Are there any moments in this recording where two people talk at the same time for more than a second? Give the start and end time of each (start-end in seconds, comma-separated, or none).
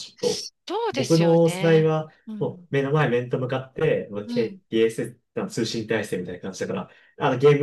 0.9-2.7